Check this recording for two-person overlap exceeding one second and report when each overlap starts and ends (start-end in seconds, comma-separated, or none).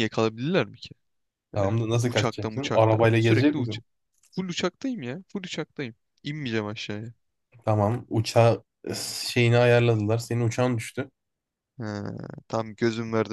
1.6-3.8